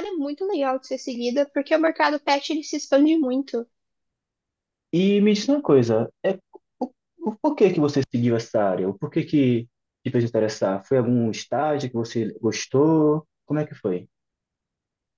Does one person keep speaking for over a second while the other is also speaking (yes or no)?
no